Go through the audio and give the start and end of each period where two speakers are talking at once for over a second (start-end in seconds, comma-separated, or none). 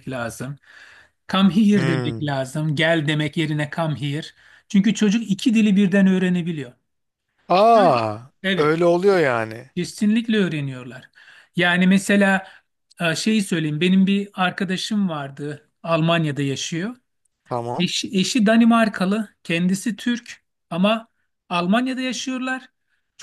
none